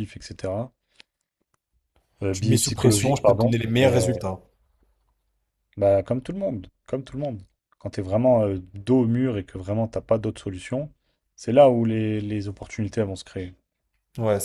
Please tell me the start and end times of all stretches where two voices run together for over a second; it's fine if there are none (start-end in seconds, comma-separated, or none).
2.3-4.0